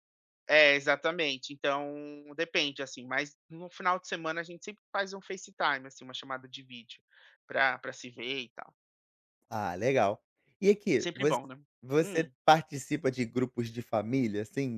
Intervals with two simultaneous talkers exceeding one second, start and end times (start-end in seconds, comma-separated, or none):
none